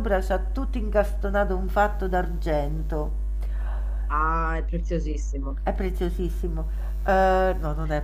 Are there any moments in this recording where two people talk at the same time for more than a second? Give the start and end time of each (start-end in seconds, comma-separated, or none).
none